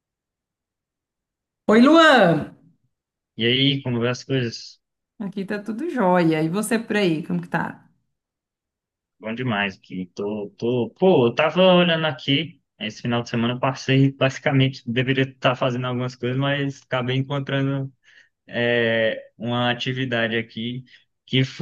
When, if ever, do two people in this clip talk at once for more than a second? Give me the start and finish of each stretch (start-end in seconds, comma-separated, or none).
none